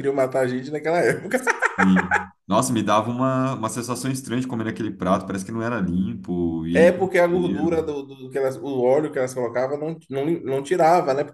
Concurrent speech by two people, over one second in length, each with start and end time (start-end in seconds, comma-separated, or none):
6.7-8.0